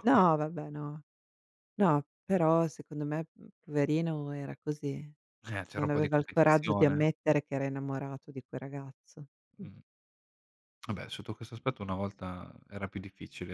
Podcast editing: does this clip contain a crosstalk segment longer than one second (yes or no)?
yes